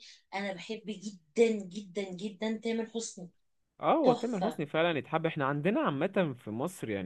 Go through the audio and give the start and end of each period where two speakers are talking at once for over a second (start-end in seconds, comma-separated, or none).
none